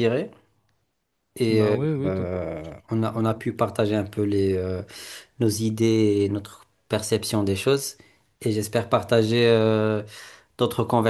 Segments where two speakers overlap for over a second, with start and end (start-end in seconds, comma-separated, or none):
1.5-3.4